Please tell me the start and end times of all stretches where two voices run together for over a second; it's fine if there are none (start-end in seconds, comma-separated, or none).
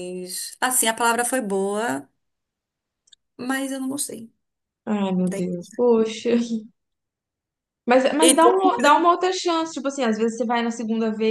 none